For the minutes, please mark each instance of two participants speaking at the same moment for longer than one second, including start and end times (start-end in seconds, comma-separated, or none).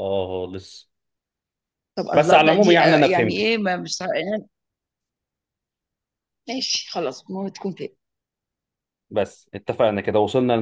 2.1-3.5